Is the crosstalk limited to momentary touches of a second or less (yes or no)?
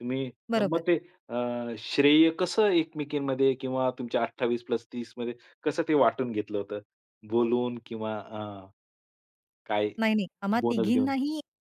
yes